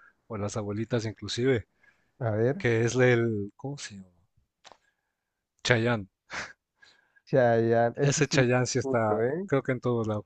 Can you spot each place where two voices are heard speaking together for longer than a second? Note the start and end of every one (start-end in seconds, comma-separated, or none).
8.0-9.5